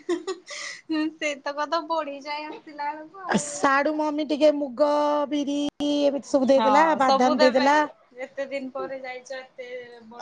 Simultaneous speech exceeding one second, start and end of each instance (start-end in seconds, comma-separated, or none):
none